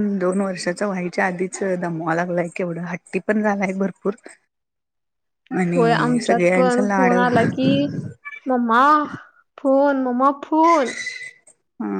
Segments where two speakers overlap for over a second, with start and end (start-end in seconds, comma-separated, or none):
5.7-7.1